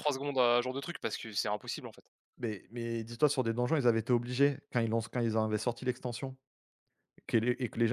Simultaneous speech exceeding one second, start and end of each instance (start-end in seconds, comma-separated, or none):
none